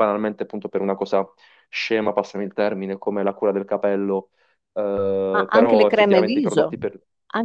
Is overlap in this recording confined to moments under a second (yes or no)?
no